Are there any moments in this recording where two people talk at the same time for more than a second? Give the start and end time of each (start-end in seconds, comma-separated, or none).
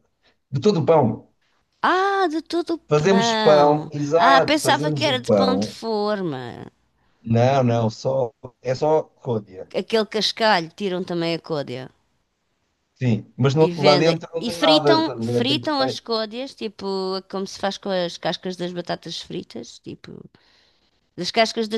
2.9-5.8, 13.6-15.7